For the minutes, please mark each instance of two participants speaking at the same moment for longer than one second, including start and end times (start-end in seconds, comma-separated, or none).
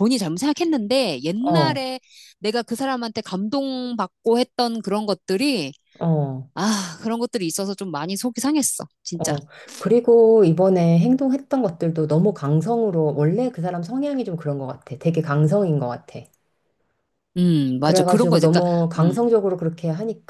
17.8-19.2